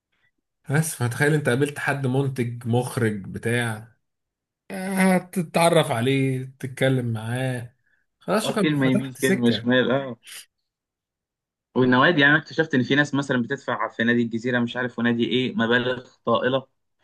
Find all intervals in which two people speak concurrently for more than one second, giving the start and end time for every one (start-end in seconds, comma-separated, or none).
8.4-9.7